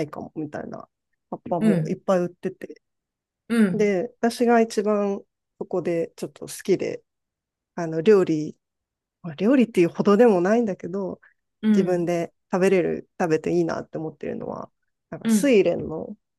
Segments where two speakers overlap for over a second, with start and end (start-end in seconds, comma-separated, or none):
none